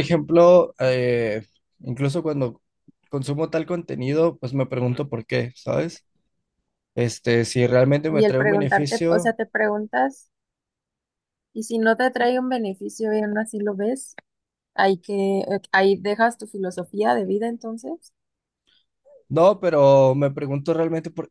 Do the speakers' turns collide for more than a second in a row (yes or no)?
yes